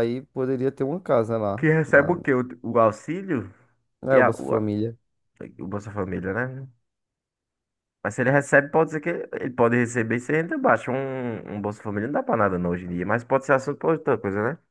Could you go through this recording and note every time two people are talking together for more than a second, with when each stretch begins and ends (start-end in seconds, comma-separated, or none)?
none